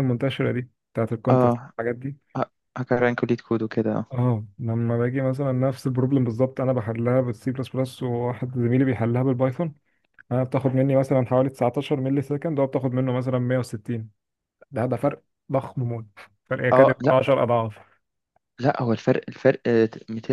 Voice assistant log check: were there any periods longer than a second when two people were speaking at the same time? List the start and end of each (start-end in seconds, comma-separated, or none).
none